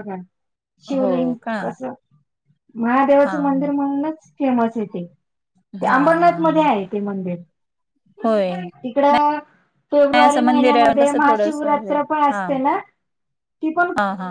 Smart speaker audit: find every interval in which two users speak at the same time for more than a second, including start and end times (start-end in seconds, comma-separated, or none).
10.0-11.7